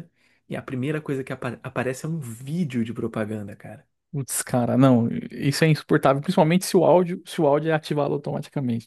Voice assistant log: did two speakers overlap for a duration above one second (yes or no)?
no